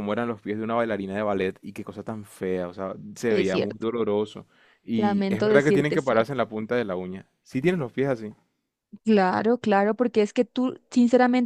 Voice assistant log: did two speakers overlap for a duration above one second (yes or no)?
yes